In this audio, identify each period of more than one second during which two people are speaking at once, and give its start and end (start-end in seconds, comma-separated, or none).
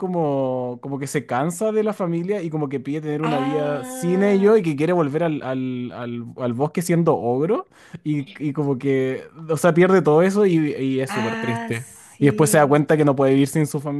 3.2-4.6, 11.1-12.8